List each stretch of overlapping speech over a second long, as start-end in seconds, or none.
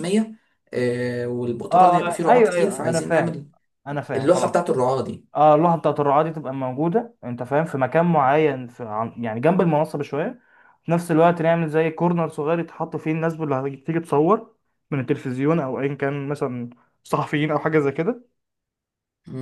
1.7-3.4